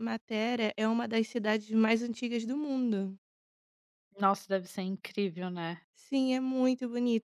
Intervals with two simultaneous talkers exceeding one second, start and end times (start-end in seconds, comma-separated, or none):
none